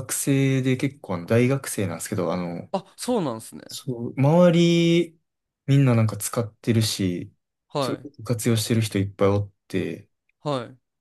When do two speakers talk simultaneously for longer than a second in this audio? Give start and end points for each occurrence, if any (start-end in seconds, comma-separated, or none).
none